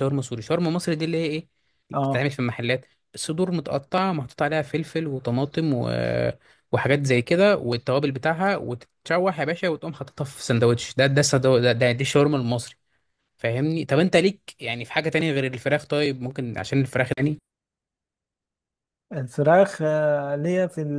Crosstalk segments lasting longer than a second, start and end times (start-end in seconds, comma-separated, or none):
none